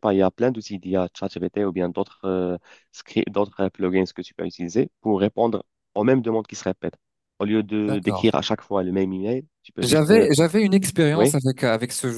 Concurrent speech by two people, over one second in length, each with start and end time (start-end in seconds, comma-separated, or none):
none